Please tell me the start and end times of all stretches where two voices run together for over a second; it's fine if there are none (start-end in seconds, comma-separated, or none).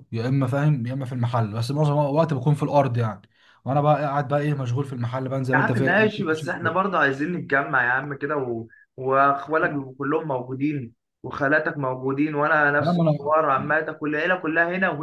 5.5-6.8